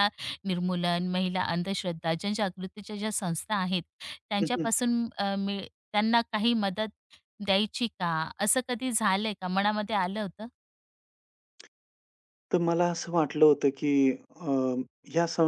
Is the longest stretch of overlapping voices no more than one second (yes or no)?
yes